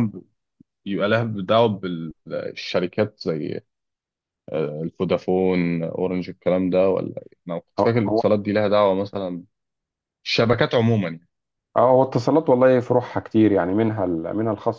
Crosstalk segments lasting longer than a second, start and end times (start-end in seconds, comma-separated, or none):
none